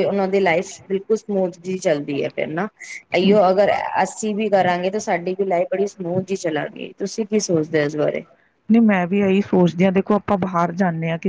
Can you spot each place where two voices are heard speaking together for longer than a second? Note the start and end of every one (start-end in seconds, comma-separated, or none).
none